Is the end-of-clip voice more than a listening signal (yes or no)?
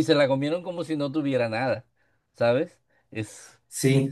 yes